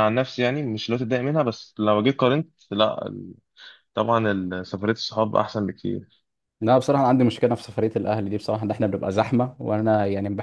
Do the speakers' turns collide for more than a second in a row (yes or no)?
no